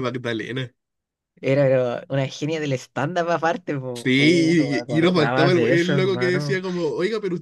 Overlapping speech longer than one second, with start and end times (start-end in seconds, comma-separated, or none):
3.9-6.6